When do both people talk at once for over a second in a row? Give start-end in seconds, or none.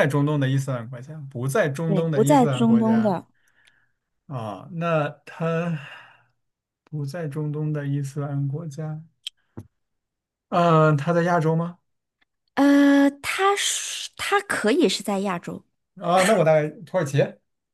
1.9-3.2